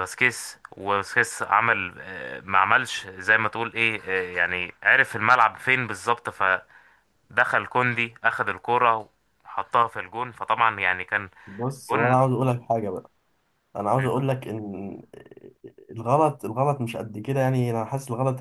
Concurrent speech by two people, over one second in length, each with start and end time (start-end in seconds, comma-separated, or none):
none